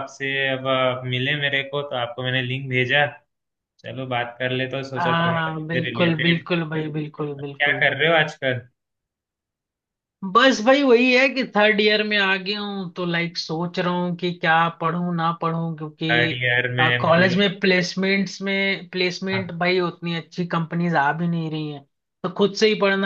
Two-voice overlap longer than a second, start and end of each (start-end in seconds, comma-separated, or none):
5.0-6.5